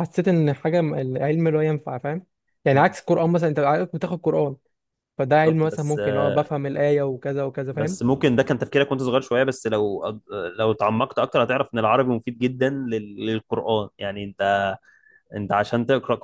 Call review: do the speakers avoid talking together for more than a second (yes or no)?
no